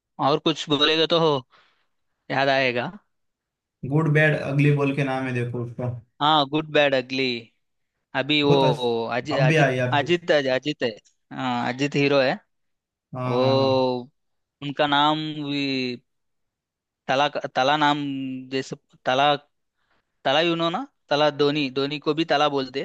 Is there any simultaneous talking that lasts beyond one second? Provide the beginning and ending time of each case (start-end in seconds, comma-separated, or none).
8.5-10.0